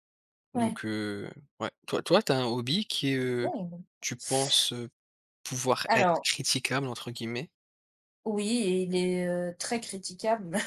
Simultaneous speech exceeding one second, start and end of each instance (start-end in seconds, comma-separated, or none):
none